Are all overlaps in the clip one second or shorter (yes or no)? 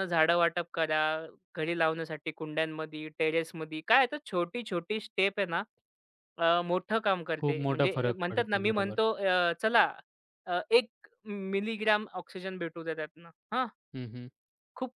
no